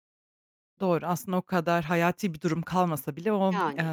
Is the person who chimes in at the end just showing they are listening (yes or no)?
yes